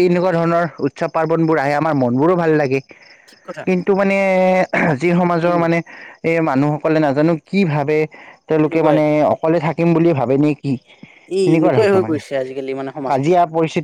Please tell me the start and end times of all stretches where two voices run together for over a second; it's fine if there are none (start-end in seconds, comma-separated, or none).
11.4-13.3